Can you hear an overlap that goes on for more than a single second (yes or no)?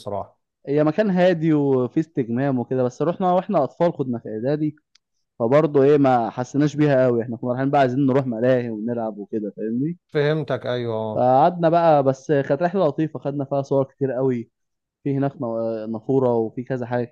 no